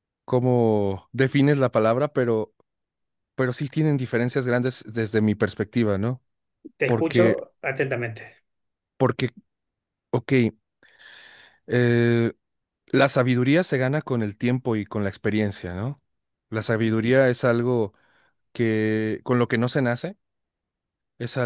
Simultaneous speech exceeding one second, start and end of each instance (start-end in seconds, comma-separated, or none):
none